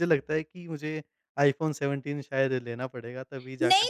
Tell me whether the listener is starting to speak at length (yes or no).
yes